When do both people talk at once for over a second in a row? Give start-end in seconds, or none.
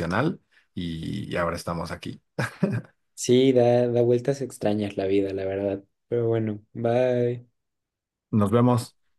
none